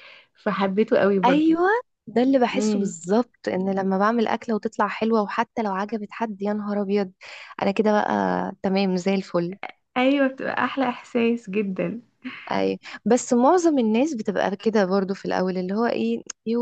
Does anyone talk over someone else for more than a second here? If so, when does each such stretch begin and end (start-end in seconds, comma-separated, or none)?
none